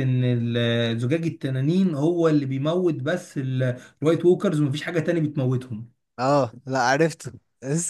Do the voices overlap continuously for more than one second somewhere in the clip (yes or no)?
no